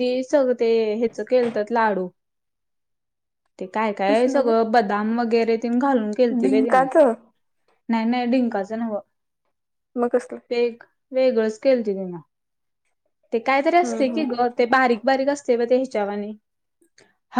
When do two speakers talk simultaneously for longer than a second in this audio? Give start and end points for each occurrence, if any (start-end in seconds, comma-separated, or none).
none